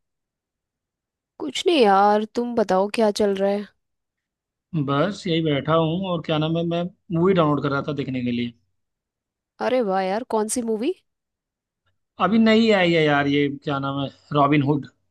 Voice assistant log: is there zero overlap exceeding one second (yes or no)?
yes